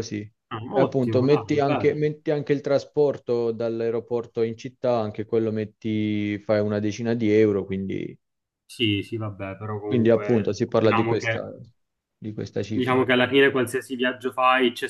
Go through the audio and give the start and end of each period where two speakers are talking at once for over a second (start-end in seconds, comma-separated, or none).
0.7-2.0, 9.8-11.5